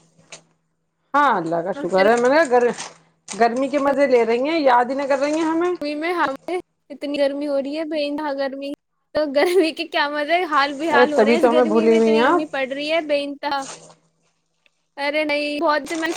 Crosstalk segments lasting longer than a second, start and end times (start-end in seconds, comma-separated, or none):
11.1-12.6